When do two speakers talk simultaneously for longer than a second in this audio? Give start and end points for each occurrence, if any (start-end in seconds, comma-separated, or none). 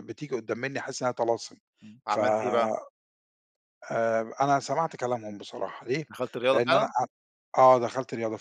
none